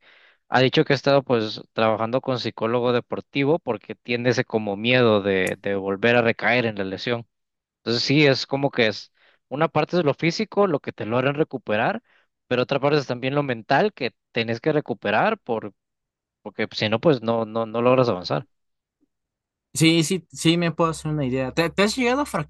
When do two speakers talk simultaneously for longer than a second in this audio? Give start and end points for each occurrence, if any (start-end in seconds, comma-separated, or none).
none